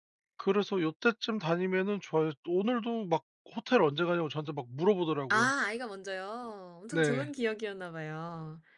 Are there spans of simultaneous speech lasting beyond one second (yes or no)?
no